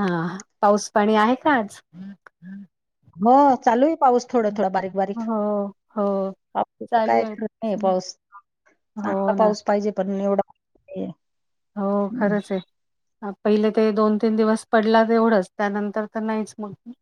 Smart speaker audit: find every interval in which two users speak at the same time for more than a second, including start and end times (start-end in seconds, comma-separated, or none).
none